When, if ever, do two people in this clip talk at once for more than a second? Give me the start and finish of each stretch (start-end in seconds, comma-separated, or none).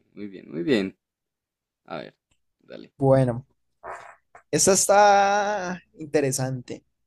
none